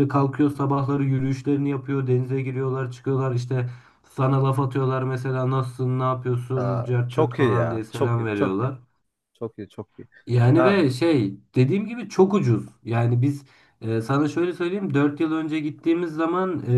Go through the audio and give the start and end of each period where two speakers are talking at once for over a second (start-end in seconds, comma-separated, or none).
6.5-8.7